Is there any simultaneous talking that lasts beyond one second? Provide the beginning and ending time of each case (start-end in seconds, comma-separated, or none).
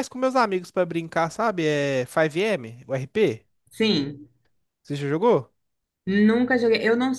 none